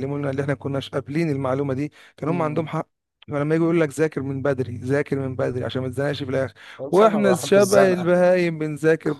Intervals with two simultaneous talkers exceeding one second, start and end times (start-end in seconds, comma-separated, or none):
6.9-8.2